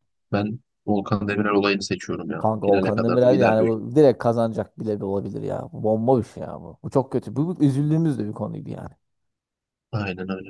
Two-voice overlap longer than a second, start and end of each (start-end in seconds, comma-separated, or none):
2.4-3.7